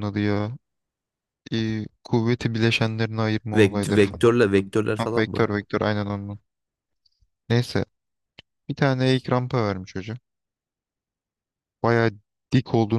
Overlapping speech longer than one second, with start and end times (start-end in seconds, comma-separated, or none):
3.5-5.5